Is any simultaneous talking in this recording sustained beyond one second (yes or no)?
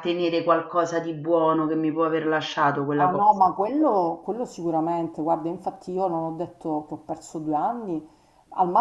no